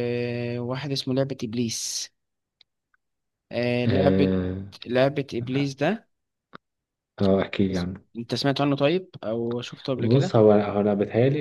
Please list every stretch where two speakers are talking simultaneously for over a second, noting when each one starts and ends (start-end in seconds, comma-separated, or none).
none